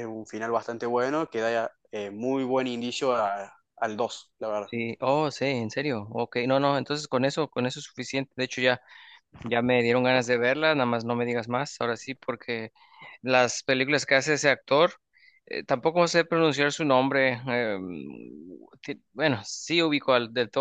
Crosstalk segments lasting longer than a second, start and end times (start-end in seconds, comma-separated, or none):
none